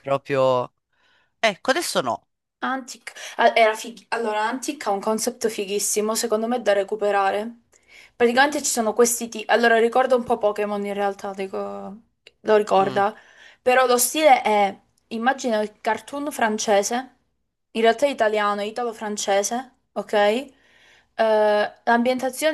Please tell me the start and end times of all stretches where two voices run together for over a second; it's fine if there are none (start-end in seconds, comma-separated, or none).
none